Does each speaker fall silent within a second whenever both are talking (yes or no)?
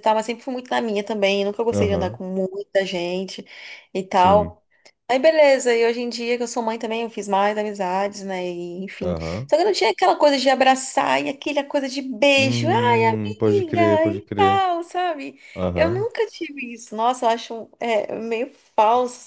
no